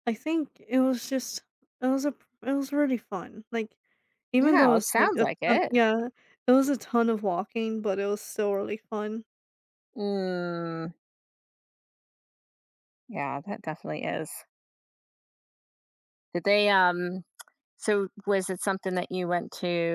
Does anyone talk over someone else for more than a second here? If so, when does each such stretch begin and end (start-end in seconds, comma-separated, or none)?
4.4-5.7